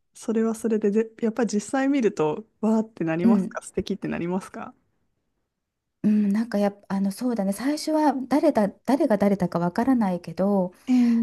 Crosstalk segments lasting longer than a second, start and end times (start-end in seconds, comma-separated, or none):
none